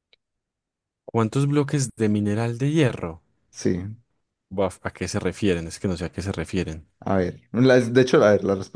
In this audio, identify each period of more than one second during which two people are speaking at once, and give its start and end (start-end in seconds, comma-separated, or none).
none